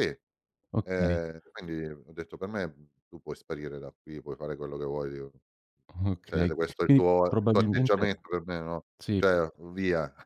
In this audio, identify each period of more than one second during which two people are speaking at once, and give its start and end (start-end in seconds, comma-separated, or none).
6.2-8.1